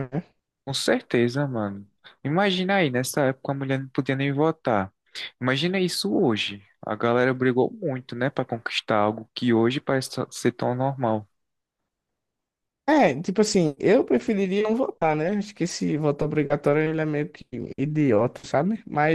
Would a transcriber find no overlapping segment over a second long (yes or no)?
yes